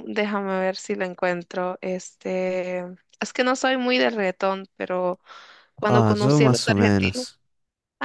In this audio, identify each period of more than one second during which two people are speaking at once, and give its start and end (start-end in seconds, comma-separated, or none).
5.8-7.3